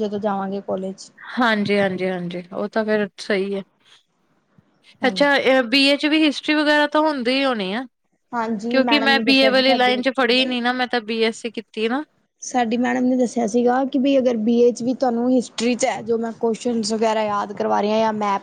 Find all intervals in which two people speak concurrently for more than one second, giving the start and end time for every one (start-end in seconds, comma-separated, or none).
8.7-10.5